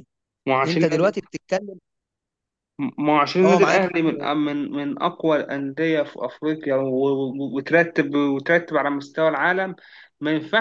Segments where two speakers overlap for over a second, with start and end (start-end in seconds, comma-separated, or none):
none